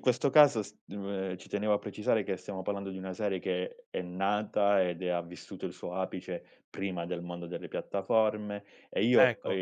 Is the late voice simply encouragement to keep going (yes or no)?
yes